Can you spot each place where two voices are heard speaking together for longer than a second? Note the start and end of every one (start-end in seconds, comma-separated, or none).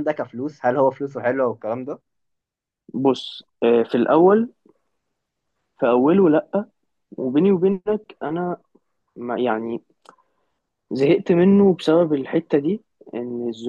none